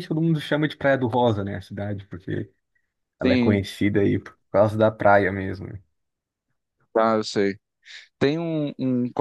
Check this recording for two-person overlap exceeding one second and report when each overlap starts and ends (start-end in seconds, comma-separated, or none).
none